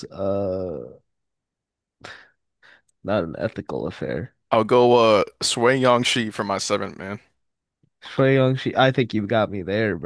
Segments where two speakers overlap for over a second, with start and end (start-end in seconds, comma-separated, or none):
none